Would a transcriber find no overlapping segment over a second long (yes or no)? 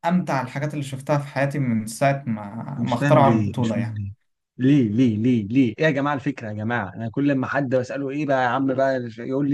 no